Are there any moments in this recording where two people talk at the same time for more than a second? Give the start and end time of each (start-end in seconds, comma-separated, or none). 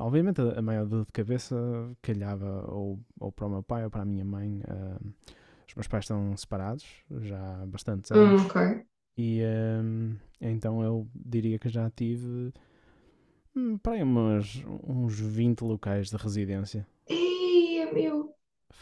none